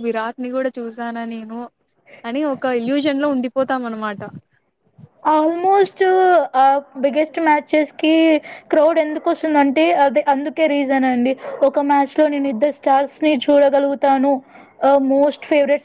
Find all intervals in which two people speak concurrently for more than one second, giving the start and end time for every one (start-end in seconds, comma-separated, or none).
none